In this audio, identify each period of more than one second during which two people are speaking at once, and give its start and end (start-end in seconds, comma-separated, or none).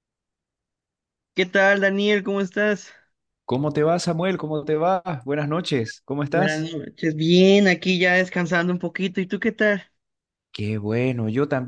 none